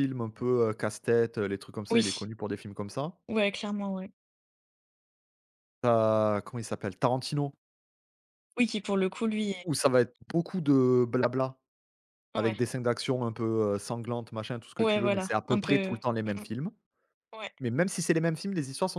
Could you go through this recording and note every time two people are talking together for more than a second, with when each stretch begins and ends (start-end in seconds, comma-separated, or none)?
14.8-16.4